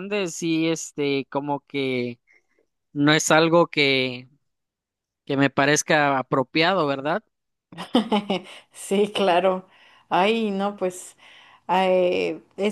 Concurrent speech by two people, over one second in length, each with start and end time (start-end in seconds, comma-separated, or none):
none